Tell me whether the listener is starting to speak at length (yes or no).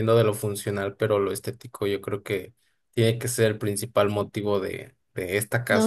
yes